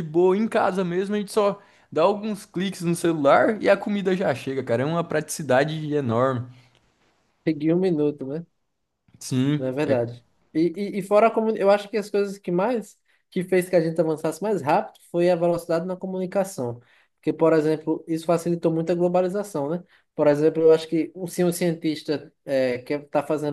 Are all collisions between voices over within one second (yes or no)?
yes